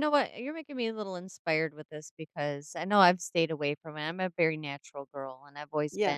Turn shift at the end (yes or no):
no